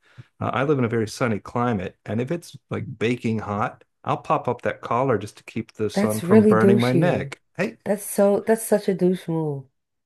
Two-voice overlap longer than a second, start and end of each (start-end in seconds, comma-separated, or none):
6.0-7.3